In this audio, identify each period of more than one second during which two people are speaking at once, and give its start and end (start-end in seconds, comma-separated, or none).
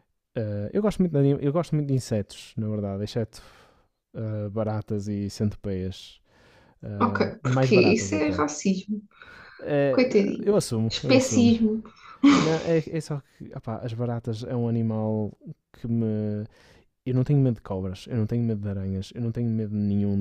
7.0-8.4, 9.9-11.5